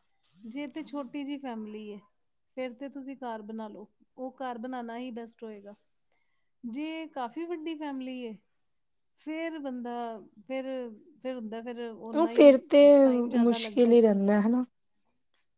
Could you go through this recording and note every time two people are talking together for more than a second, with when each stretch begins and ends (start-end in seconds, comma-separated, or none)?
none